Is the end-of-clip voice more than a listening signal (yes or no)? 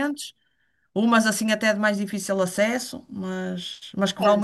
yes